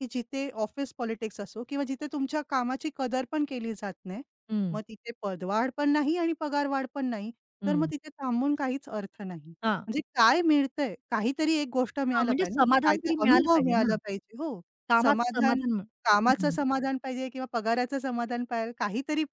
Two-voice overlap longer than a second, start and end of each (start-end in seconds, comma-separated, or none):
12.1-13.9